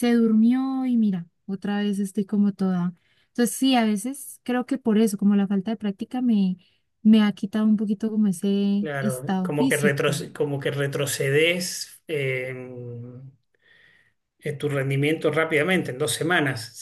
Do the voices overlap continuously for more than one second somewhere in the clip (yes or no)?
yes